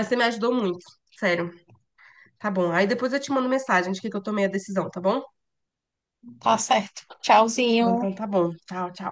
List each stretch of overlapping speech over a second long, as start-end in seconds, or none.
none